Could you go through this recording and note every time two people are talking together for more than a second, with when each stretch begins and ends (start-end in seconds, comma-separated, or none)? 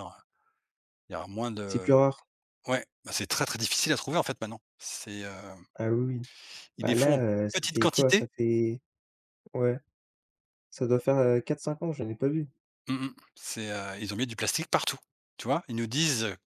6.8-8.3